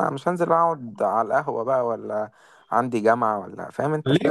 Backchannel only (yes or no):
no